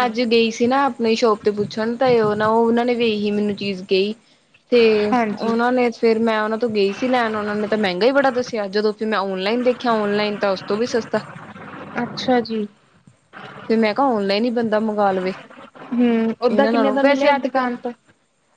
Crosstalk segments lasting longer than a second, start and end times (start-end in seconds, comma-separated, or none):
16.5-17.7